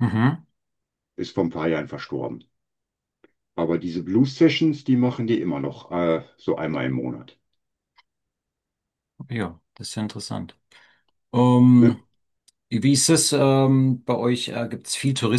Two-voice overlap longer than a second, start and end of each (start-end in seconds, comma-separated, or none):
none